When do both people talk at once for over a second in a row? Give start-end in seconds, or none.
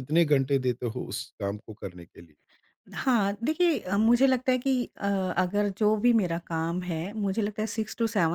none